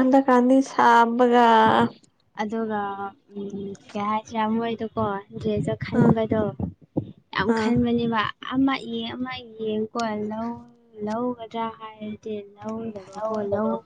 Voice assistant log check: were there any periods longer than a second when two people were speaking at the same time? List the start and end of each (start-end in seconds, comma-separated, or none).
none